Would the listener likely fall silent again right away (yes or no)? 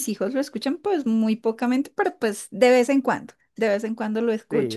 no